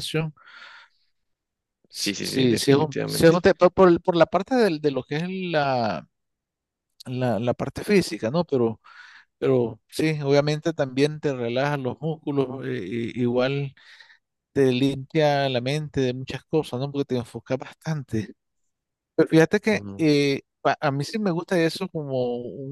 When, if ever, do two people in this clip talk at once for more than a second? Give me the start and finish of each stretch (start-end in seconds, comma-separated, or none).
1.9-3.4